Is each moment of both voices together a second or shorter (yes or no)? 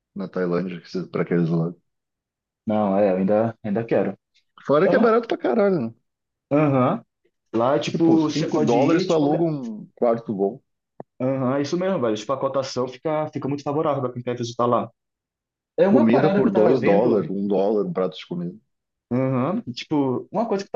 no